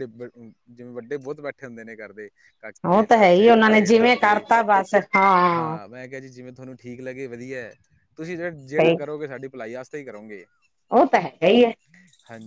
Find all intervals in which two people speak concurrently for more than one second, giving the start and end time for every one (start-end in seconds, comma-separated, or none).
2.9-4.5